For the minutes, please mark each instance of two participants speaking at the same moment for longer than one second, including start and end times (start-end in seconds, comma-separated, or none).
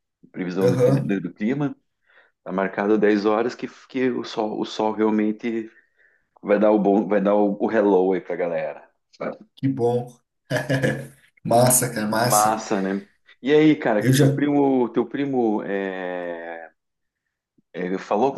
none